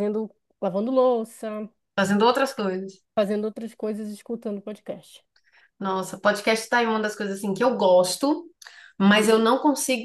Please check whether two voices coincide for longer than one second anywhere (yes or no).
no